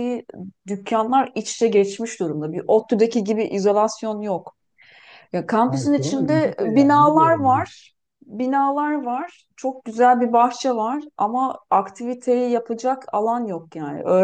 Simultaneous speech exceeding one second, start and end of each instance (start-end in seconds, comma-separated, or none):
5.7-7.7